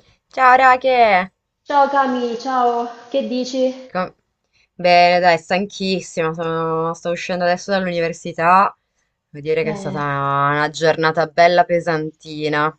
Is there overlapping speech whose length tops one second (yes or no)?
no